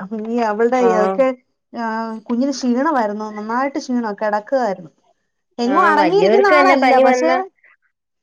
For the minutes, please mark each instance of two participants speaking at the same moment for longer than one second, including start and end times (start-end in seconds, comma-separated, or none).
5.7-7.3